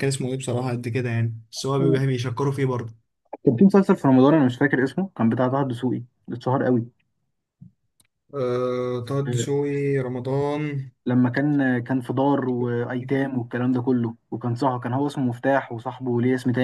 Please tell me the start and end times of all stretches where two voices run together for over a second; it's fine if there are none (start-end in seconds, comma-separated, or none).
none